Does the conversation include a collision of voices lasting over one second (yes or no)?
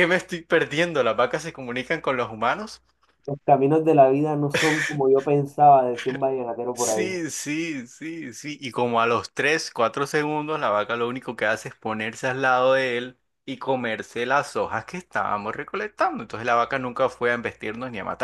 no